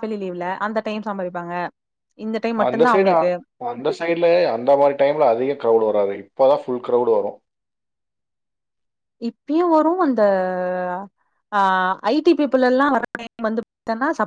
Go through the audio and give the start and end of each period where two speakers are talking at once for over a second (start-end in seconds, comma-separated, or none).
none